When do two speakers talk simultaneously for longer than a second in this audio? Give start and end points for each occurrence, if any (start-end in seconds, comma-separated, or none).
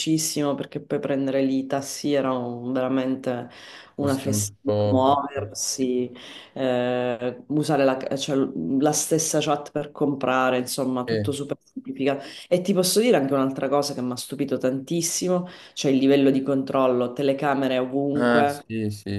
3.9-5.2